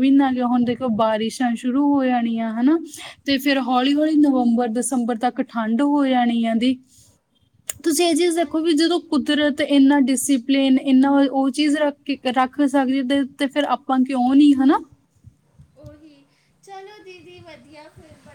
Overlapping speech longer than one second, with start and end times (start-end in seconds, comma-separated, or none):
none